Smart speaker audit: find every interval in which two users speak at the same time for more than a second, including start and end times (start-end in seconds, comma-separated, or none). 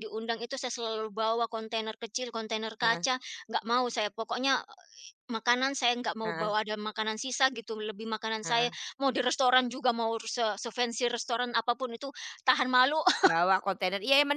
none